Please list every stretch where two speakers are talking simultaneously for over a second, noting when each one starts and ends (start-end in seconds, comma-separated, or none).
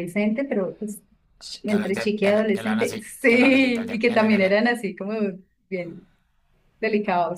1.7-4.7